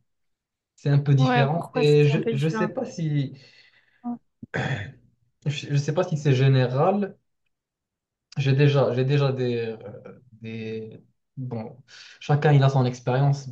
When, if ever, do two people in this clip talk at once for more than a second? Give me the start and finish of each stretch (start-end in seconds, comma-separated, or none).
1.2-2.7